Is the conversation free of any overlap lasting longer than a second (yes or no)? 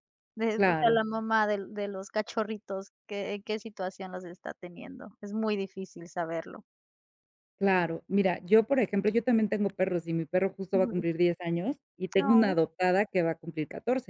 yes